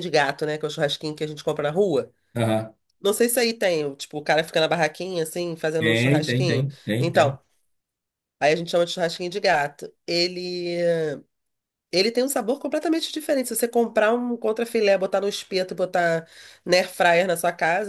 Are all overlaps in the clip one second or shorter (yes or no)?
no